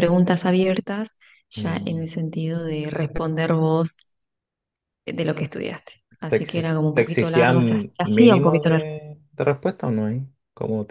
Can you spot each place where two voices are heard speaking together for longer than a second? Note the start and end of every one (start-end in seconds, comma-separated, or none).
6.3-8.9